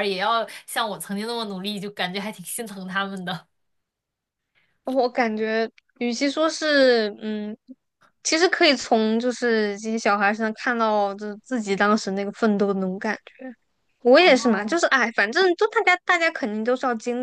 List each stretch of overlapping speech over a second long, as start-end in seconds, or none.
none